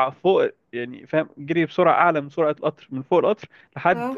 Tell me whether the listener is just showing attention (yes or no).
yes